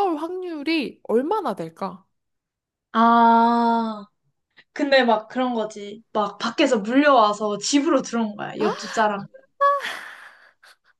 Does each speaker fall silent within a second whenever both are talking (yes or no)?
yes